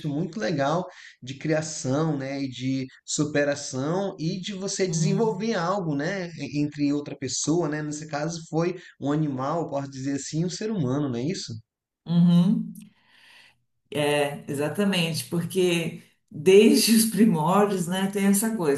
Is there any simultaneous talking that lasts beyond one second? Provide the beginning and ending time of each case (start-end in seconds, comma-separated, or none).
none